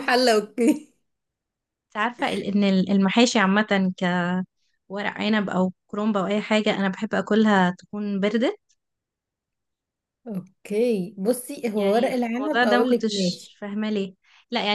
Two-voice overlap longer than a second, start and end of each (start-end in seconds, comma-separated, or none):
11.8-13.6